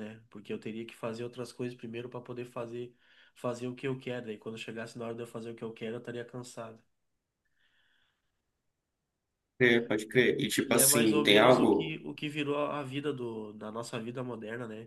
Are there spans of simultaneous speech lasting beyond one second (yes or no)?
yes